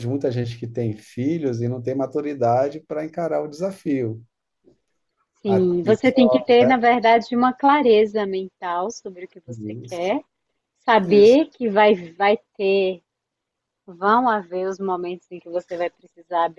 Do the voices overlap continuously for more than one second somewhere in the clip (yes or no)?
yes